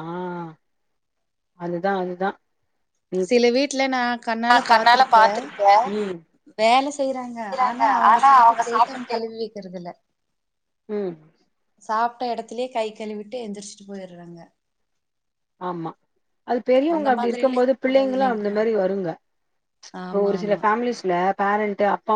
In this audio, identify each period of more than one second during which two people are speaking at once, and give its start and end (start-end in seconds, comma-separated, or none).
17.0-18.6